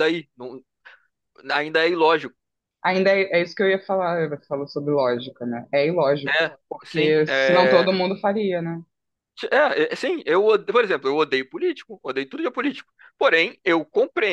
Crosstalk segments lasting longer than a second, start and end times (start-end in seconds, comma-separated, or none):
6.2-7.9